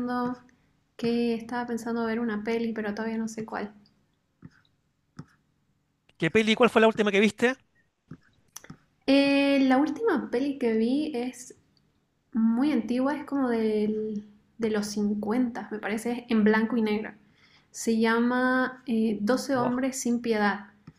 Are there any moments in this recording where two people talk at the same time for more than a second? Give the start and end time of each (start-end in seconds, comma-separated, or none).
none